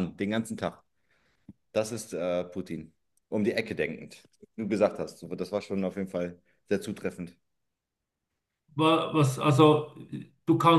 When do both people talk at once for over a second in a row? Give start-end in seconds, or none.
none